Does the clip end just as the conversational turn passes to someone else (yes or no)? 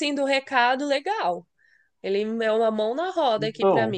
no